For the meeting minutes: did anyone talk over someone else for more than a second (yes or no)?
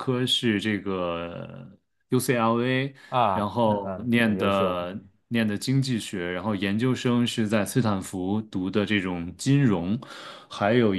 yes